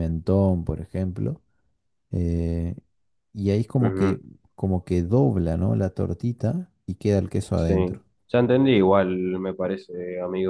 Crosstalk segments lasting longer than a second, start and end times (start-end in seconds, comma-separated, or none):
none